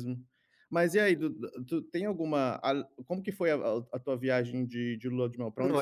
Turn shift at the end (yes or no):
yes